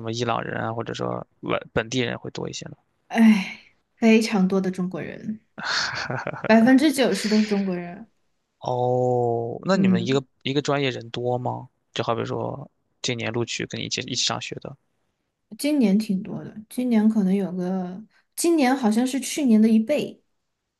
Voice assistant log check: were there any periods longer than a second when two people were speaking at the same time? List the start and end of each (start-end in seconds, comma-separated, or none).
none